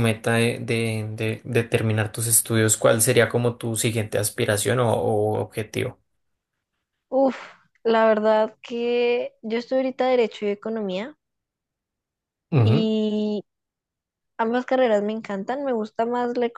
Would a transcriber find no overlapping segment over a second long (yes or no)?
yes